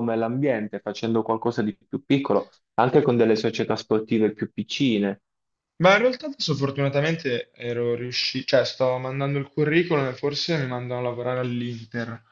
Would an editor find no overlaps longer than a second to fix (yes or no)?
yes